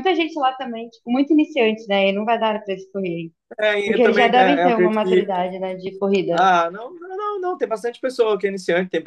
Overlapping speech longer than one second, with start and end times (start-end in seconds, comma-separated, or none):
3.8-5.3